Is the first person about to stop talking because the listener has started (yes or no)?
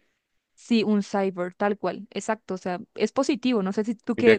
yes